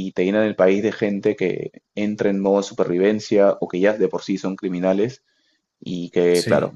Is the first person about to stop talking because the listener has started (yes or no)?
no